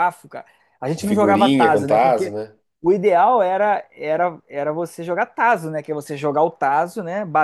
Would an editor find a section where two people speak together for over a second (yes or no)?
yes